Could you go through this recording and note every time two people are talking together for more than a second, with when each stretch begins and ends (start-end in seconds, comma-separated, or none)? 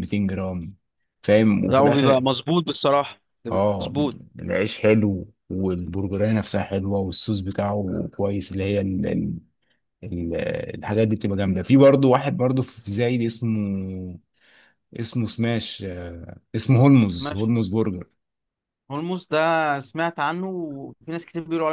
none